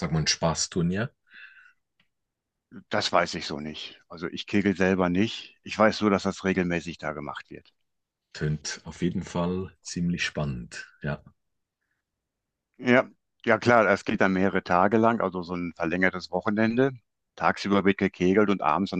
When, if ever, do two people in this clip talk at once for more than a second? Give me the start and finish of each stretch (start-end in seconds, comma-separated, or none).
none